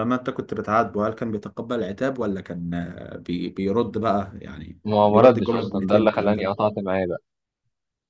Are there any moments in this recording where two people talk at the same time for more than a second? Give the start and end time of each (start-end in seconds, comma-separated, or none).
4.9-6.5